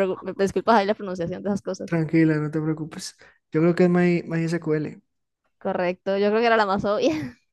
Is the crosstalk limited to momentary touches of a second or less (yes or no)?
yes